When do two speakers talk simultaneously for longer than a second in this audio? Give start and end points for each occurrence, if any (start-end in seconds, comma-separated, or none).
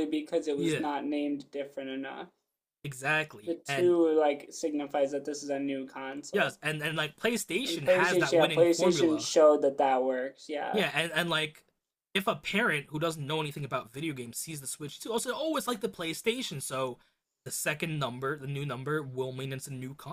7.6-9.3